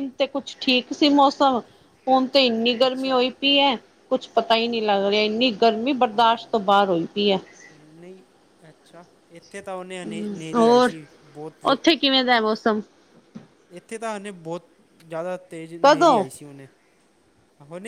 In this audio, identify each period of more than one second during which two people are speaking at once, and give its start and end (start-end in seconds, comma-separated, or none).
none